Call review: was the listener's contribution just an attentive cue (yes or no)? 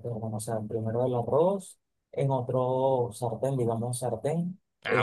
yes